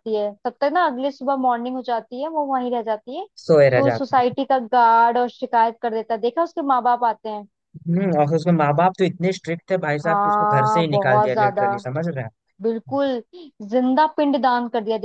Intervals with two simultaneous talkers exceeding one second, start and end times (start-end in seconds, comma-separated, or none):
10.0-11.6